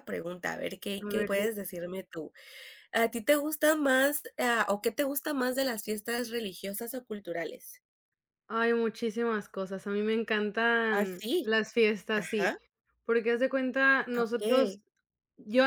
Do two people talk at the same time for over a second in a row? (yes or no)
no